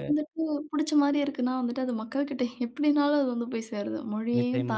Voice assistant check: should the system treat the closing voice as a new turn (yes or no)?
yes